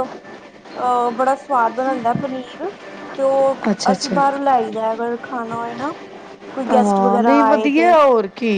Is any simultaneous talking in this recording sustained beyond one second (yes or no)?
yes